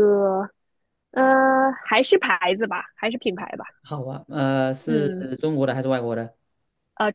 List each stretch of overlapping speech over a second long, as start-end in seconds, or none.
none